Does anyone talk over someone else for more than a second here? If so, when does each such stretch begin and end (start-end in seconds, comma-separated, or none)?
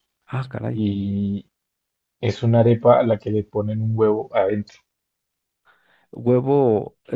none